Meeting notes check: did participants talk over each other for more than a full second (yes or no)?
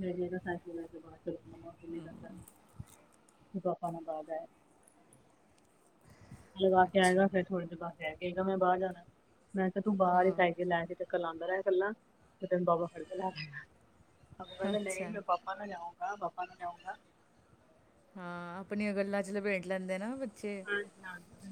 no